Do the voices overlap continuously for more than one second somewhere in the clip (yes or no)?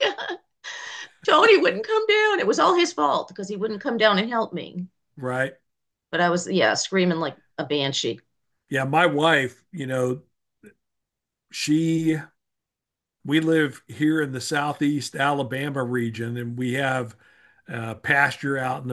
no